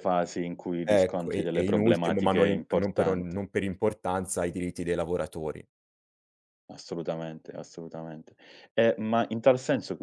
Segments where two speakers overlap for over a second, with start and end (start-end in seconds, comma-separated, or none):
0.9-3.4